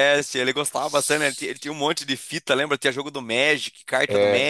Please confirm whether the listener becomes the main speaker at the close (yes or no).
yes